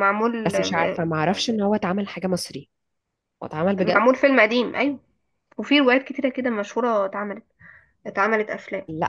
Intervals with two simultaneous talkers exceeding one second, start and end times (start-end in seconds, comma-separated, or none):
none